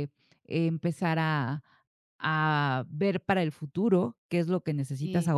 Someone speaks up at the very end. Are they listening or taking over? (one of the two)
listening